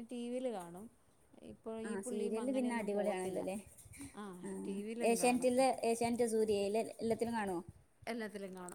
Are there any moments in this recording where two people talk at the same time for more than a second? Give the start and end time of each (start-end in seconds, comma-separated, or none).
1.9-3.4